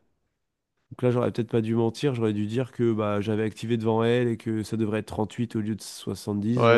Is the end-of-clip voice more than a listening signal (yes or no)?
yes